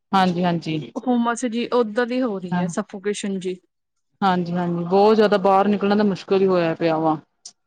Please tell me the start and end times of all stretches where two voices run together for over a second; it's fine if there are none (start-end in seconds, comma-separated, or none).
none